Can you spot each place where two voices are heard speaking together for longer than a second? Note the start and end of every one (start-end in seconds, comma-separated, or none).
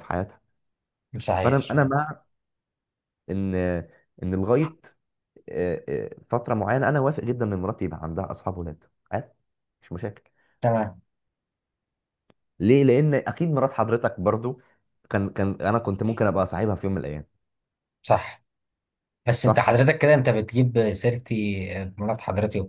none